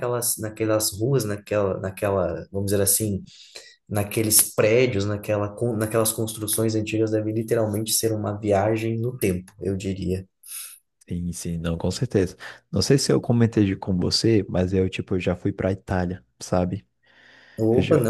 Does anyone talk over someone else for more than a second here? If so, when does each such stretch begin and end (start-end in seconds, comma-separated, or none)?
none